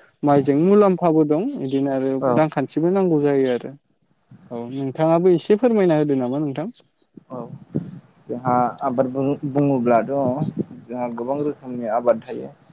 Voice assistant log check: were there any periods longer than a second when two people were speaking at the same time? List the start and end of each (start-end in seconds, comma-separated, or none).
none